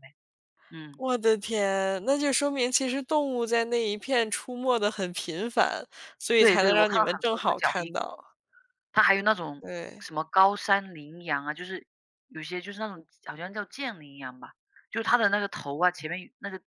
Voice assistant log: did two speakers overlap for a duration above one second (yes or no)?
yes